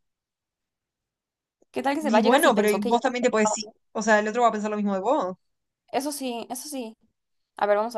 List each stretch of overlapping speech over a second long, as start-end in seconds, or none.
2.0-3.7